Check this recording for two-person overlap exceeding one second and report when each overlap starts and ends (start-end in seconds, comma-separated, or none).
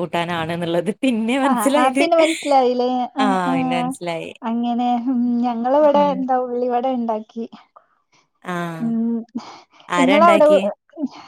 none